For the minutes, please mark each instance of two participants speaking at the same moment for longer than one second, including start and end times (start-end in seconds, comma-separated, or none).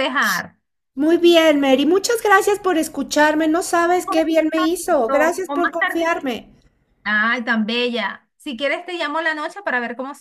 4.0-6.1